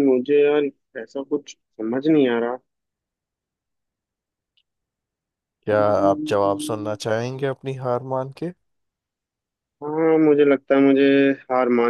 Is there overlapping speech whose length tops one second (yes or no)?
yes